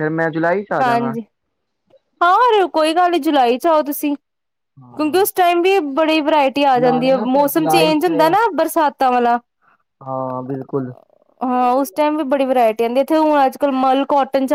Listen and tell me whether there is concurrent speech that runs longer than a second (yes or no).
yes